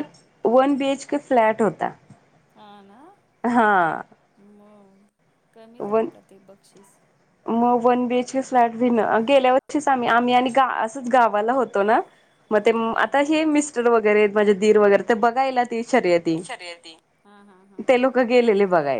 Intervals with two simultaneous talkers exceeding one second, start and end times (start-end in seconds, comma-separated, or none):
none